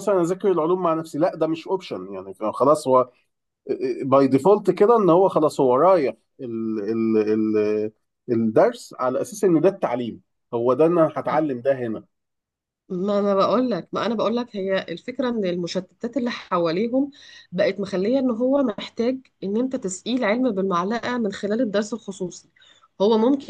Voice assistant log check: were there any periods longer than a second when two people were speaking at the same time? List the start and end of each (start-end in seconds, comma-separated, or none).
none